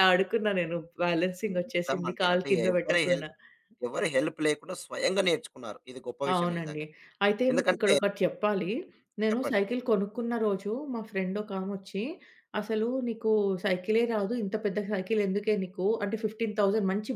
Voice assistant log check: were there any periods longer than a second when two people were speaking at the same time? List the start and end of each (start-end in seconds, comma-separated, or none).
1.5-3.3